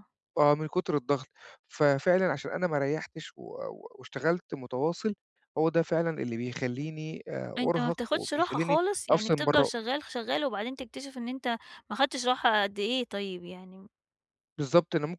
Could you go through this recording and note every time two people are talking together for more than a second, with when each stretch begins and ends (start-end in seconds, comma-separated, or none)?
7.6-9.7